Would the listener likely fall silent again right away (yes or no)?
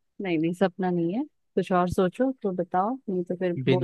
no